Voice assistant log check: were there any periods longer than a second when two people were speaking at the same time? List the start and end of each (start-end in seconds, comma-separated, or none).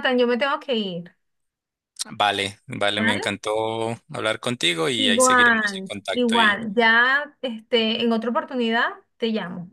5.0-6.6